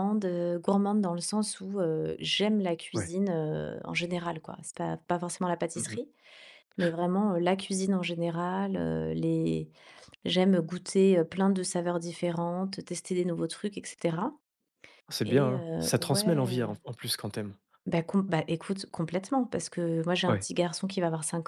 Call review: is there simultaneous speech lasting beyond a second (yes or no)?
yes